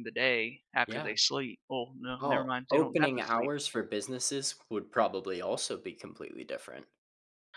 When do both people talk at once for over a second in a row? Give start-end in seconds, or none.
2.2-3.5